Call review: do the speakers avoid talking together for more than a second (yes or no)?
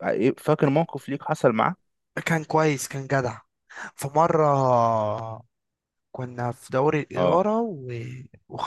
yes